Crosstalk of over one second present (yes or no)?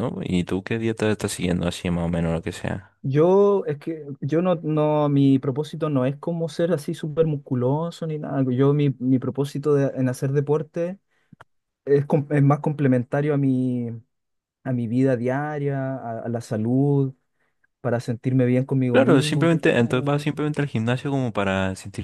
yes